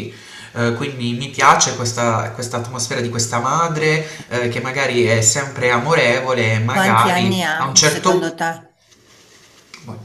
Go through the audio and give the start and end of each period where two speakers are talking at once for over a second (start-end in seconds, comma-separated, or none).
6.7-8.4